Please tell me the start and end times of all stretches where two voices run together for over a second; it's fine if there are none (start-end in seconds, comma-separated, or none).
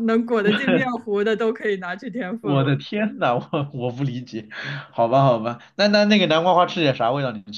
none